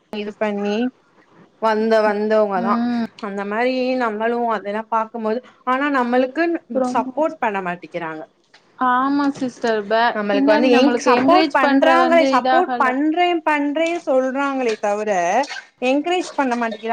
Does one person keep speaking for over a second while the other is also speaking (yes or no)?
yes